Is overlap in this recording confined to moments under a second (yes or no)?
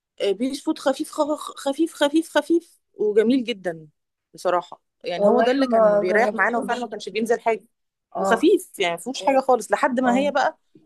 no